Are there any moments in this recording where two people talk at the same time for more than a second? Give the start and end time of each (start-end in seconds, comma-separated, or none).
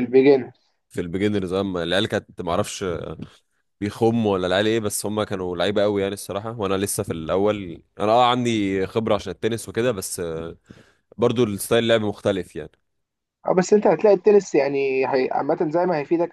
none